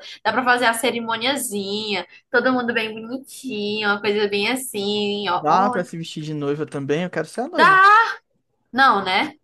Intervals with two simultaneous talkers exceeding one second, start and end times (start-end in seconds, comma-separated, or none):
none